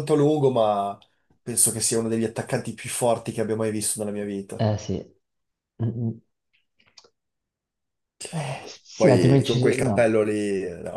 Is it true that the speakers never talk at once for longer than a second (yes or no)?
no